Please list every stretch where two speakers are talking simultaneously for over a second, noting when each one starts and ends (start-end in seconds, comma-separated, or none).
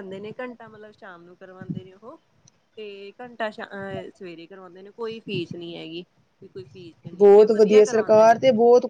7.2-8.4